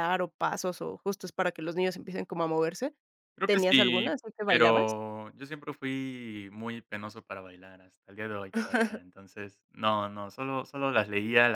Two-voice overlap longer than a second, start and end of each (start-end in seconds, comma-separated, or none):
3.4-5.0